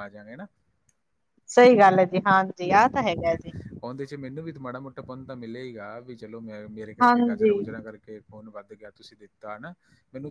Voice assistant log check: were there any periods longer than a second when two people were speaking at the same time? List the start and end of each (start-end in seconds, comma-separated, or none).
none